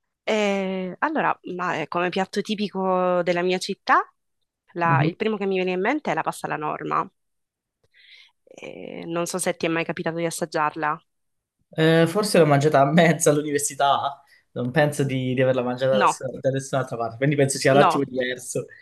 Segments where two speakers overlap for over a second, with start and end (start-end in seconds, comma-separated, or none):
none